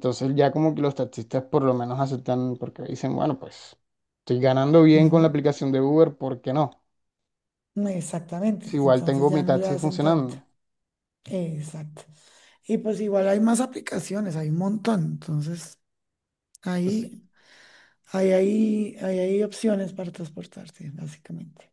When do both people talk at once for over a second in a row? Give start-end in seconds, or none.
8.7-10.3